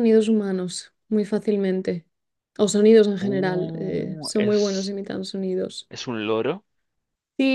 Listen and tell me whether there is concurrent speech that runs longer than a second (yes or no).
yes